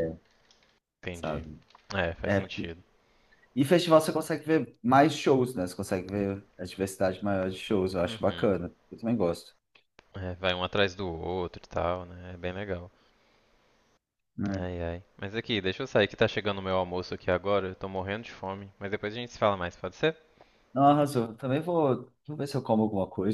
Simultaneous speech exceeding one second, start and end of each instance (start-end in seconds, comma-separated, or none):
none